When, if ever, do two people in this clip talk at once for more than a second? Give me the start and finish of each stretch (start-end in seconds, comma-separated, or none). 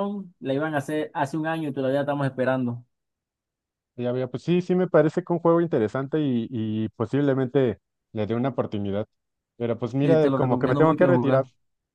10.0-11.4